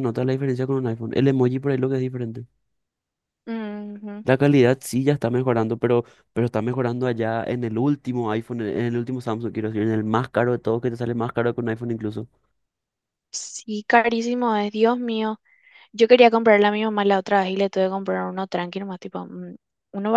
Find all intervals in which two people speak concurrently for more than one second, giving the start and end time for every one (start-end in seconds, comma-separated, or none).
none